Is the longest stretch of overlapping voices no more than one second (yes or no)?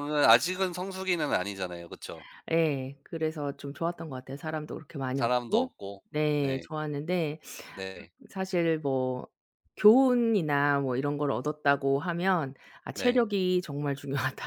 yes